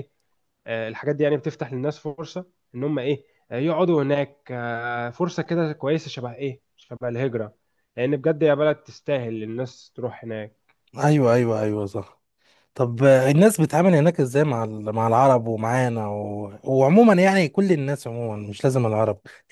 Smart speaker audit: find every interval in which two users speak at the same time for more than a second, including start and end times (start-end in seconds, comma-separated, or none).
none